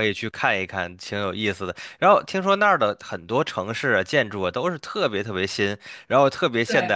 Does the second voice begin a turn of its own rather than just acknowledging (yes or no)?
no